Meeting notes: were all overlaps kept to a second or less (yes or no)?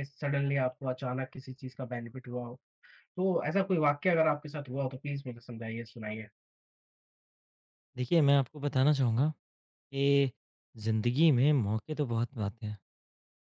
yes